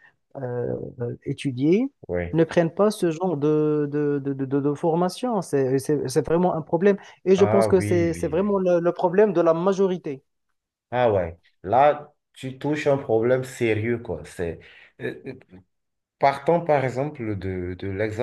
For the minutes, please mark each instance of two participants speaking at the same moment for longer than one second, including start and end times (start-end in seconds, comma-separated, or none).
7.4-8.6